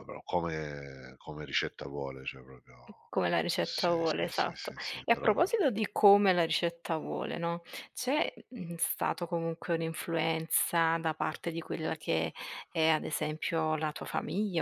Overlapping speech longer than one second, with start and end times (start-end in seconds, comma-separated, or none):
3.6-5.5